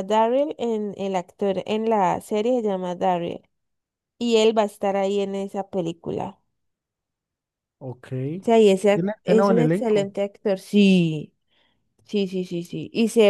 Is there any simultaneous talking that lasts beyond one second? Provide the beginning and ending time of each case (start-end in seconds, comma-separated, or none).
8.9-10.2